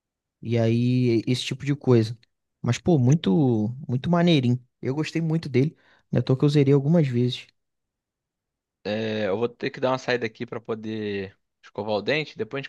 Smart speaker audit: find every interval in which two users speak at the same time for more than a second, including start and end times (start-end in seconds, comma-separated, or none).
none